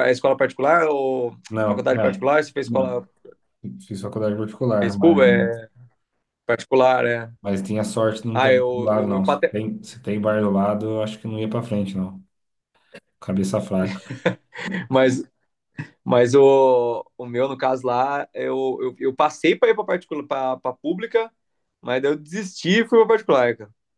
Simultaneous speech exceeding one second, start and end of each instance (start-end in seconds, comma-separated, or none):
1.5-3.1, 8.3-9.6